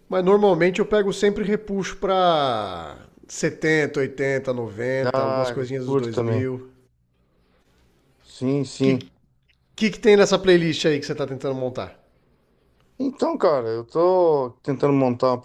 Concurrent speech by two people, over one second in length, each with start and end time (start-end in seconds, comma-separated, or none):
5.1-6.5